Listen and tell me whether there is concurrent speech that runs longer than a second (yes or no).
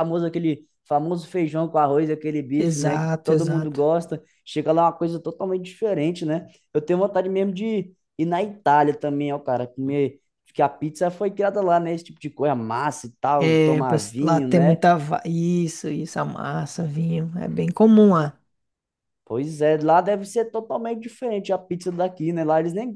yes